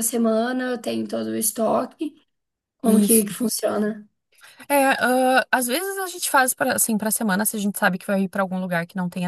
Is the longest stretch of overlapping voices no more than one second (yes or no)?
yes